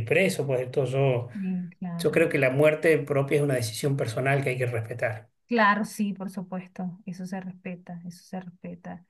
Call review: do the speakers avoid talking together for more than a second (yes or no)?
yes